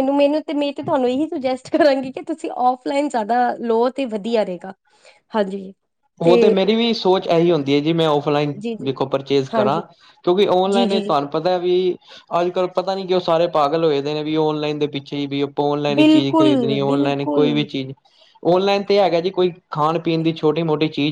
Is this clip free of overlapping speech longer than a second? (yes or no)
no